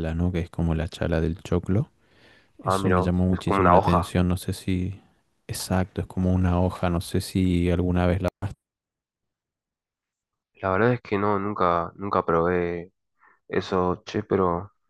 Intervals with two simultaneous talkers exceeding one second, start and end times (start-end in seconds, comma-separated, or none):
2.6-4.1